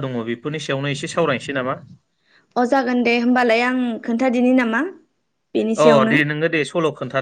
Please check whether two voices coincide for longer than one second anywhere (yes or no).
no